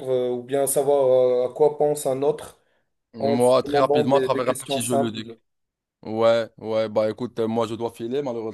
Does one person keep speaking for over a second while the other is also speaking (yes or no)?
yes